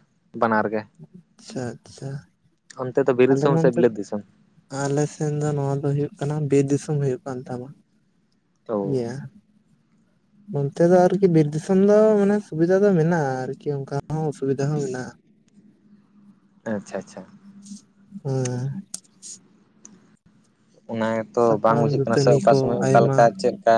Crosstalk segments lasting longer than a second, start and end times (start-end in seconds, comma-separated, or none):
21.4-23.2